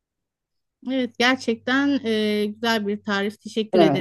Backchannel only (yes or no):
no